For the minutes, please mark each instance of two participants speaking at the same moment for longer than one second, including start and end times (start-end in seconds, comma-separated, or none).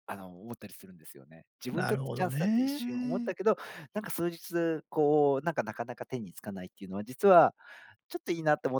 1.7-3.3